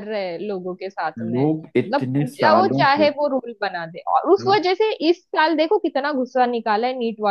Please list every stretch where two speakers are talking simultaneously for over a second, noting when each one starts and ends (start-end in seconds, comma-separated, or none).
1.2-3.1